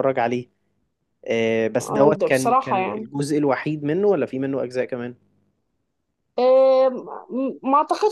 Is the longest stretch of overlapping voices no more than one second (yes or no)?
no